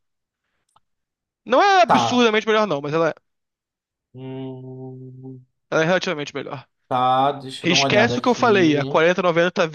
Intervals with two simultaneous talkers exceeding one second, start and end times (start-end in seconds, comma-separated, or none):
7.6-8.9